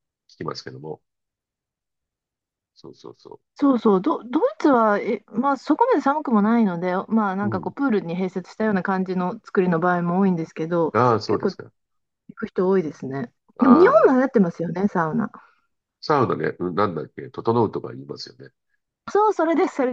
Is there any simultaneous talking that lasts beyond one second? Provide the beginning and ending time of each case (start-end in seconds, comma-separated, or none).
none